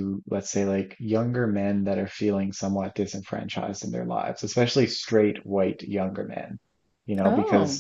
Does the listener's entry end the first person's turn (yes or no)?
no